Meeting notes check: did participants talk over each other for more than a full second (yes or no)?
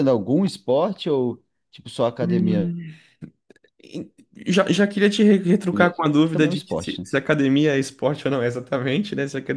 yes